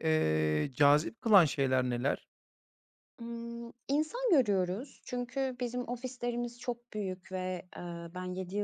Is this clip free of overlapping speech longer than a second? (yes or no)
yes